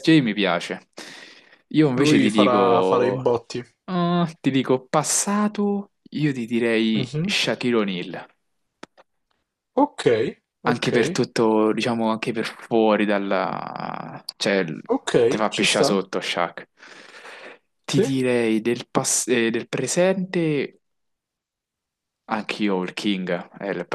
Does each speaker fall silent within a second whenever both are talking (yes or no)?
no